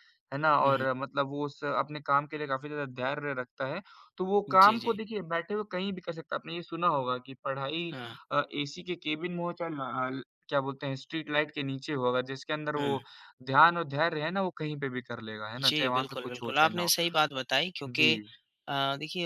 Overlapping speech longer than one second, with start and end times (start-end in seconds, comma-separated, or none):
15.6-16.9